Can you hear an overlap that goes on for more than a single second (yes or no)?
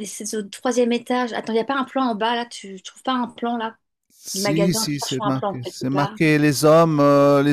yes